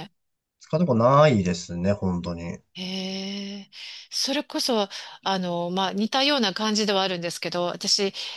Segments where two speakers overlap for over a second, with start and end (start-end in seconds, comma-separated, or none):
none